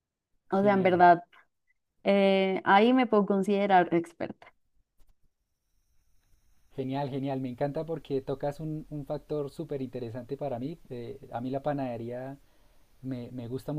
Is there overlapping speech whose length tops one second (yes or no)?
no